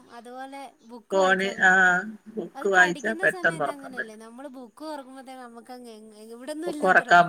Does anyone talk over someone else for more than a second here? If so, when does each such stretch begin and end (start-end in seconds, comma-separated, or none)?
2.6-4.2